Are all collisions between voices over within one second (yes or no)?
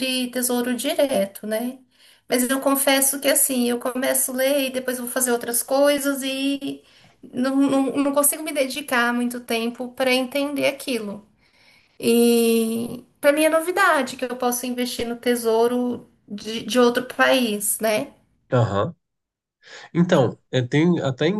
yes